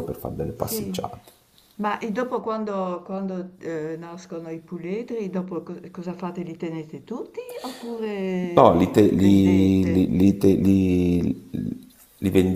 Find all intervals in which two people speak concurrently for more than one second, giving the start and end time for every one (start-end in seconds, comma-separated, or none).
8.5-10.0